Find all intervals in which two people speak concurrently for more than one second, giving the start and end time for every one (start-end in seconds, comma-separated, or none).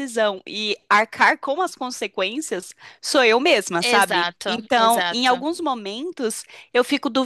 3.8-5.4